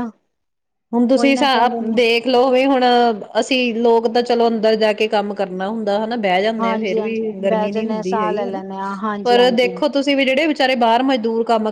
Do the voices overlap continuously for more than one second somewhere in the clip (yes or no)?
yes